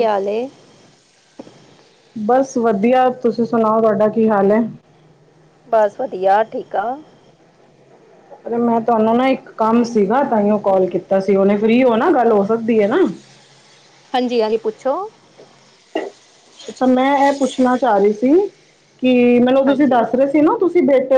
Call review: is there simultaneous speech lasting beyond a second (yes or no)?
no